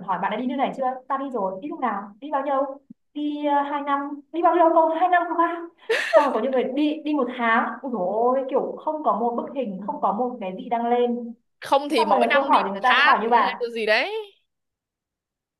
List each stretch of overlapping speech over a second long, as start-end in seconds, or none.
11.9-13.7